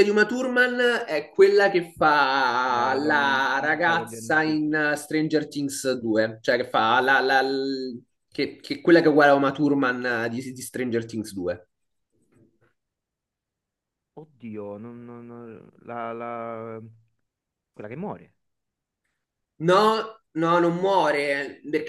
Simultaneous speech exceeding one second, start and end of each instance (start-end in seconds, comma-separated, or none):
2.7-4.7